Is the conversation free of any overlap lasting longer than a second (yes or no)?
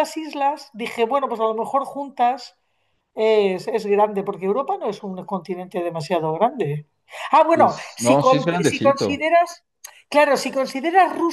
no